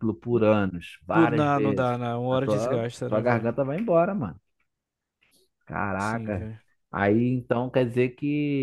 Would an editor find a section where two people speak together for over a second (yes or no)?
yes